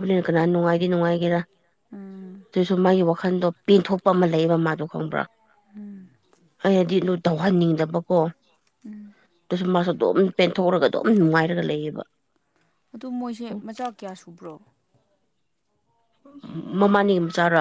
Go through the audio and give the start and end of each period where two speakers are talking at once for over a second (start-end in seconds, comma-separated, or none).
none